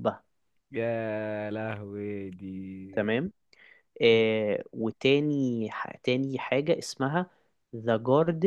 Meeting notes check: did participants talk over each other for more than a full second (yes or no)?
no